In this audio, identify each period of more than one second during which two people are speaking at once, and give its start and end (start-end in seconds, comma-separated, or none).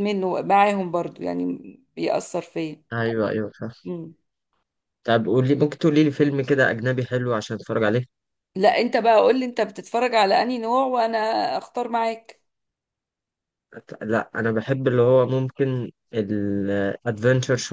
none